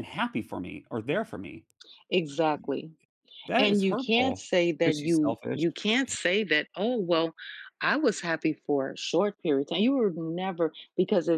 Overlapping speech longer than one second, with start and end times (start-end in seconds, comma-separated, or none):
3.6-5.6